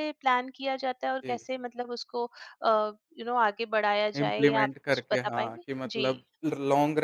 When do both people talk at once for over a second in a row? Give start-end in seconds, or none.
4.2-6.1